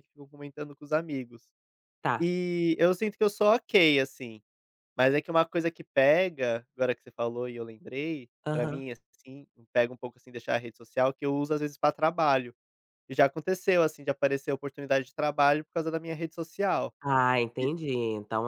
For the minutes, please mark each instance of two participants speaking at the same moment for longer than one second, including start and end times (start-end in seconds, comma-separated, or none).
none